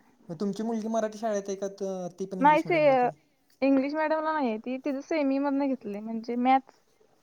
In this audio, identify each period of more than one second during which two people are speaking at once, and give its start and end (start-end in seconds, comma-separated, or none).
none